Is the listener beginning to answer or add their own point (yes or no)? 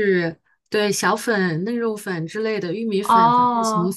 no